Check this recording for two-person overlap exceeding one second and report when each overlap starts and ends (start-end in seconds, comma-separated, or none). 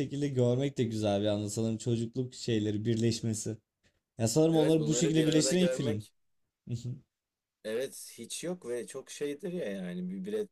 4.5-6.1